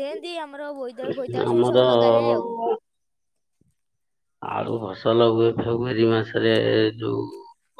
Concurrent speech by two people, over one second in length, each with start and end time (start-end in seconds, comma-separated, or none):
none